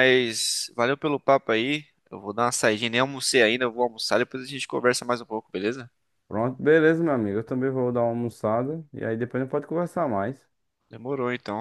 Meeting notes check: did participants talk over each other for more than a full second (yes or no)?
no